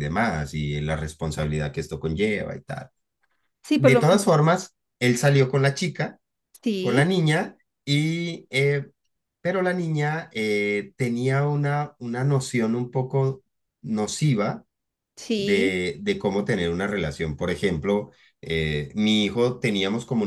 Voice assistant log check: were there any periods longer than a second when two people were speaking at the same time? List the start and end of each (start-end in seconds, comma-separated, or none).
none